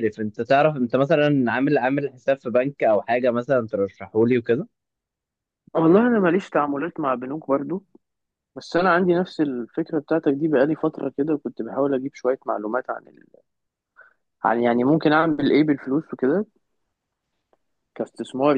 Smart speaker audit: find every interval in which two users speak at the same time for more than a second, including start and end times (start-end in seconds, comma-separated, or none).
none